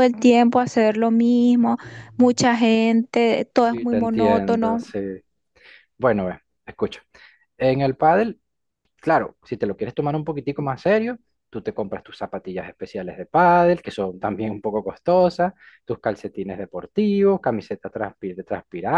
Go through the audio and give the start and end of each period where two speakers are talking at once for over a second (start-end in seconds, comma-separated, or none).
3.6-4.9